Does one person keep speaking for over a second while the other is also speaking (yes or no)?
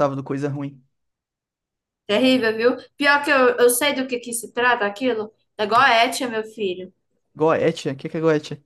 no